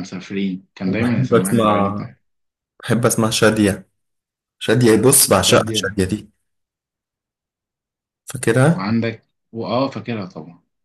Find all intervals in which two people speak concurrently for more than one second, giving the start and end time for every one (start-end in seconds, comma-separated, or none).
0.9-2.1